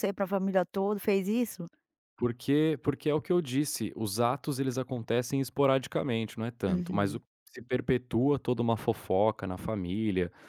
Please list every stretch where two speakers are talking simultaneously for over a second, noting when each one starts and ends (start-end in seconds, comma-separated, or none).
none